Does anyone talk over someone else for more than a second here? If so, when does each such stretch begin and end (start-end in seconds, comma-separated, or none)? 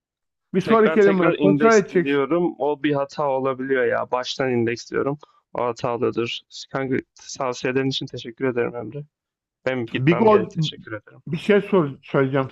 0.6-2.2